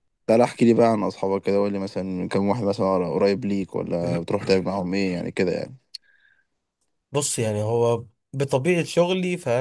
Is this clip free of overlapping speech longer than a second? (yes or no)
yes